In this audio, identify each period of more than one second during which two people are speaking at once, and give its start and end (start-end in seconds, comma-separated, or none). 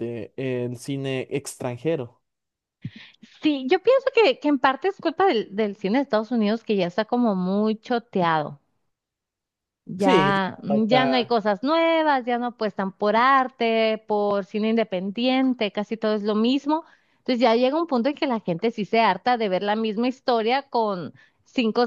10.0-11.4